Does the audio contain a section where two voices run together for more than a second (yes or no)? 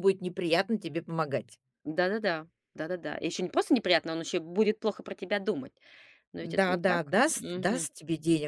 yes